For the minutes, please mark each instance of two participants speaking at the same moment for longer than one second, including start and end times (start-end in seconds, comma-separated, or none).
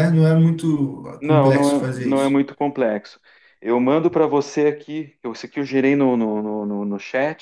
1.2-2.4